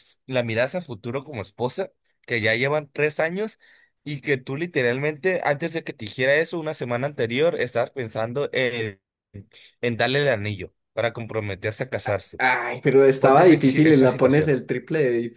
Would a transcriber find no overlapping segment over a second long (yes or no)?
no